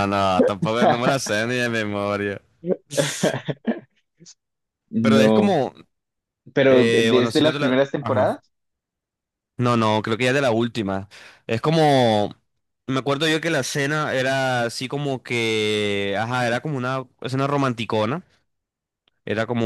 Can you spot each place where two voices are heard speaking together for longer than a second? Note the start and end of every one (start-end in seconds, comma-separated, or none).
6.7-8.3